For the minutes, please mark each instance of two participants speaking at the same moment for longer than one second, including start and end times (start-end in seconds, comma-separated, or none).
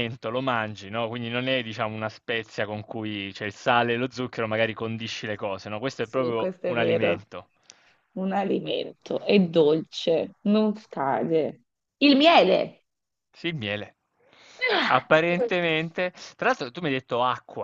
6.0-7.2